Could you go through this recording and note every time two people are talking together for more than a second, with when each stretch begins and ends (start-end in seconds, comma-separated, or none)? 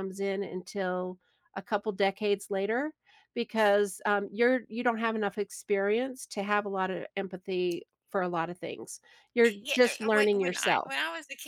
9.4-10.9